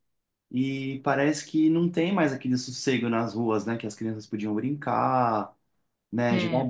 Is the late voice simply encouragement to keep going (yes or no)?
yes